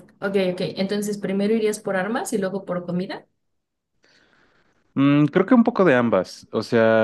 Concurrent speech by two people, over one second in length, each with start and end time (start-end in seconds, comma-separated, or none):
none